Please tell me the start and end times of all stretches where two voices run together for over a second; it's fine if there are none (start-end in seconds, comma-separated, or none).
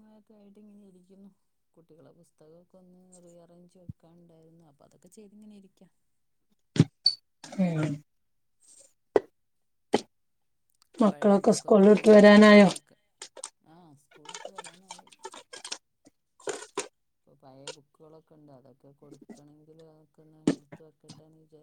11.1-12.7